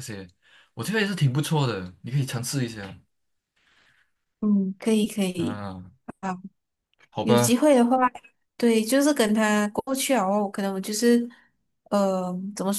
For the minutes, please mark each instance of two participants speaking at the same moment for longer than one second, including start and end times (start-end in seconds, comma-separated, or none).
none